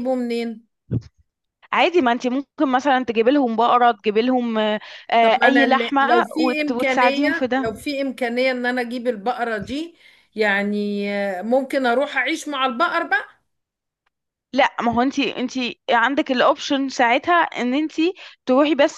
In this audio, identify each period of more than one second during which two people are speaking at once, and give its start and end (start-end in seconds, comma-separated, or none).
5.2-7.7